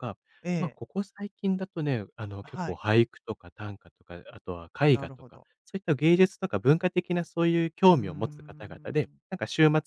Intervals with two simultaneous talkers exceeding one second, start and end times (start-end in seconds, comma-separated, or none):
7.9-9.2